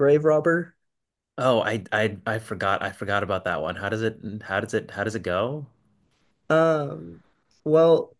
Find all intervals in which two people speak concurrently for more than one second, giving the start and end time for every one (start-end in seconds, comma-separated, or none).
none